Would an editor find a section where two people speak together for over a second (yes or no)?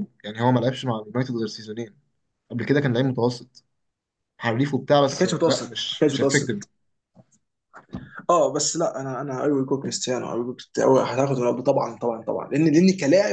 yes